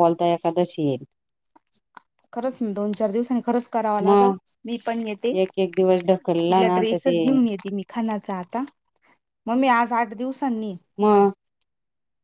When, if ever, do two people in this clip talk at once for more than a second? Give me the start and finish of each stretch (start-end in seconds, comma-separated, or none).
5.4-7.2